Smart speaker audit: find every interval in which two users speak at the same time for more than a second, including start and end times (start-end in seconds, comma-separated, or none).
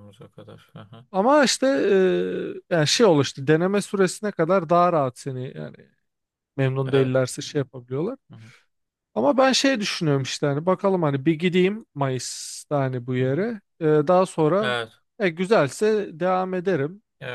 none